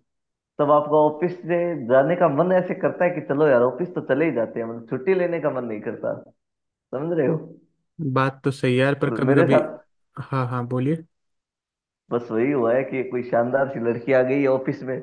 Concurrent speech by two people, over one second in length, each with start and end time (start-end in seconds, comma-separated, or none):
none